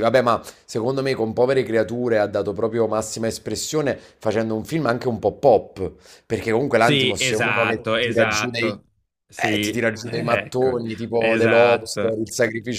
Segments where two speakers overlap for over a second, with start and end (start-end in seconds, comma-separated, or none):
6.8-8.8, 9.5-12.2